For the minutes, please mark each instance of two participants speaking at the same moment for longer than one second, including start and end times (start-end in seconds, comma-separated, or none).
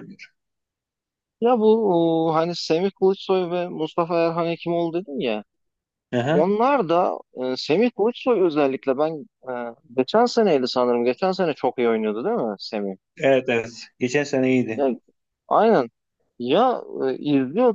none